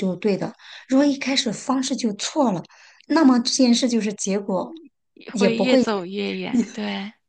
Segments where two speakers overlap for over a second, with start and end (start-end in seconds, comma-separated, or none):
none